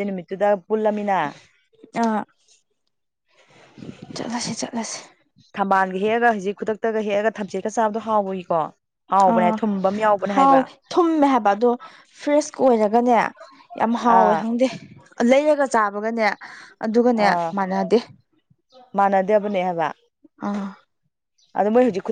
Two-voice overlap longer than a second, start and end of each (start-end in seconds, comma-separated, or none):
none